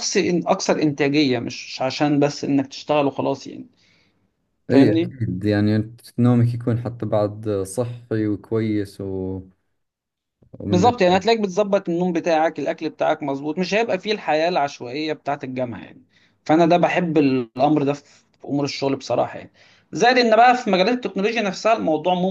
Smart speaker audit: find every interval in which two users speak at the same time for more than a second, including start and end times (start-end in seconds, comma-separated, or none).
none